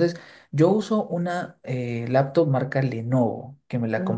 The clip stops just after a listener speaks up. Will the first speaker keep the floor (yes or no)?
yes